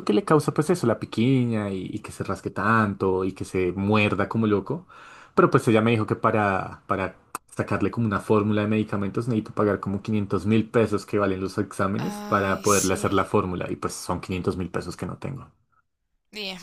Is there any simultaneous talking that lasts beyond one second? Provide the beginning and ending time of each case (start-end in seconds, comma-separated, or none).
12.0-13.3